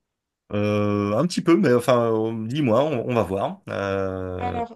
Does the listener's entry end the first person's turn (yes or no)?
yes